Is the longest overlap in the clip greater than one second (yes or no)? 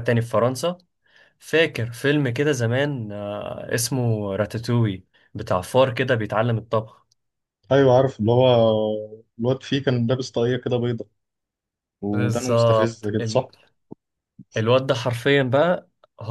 yes